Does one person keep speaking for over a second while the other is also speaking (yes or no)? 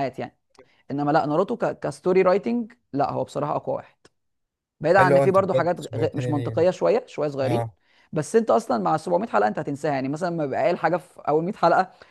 yes